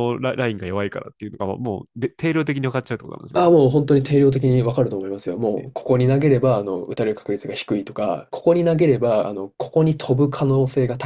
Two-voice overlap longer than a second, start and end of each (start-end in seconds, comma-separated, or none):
none